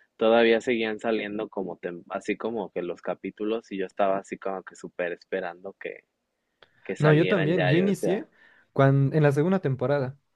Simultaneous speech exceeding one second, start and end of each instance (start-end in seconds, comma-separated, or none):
7.0-8.3